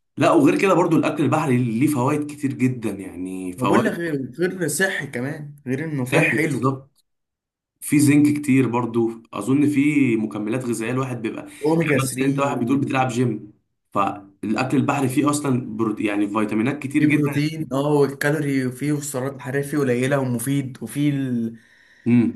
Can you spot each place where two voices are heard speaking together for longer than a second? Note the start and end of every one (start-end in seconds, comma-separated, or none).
11.8-13.1